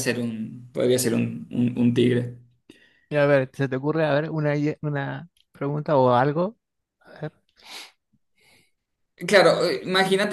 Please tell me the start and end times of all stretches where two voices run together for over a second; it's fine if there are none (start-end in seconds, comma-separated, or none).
none